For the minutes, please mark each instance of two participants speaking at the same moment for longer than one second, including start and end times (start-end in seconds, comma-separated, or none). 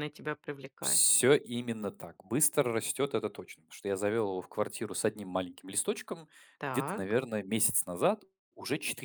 none